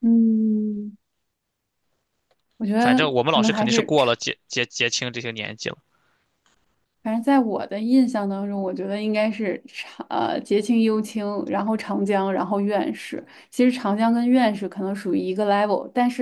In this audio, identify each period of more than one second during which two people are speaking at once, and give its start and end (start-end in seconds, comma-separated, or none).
2.8-4.2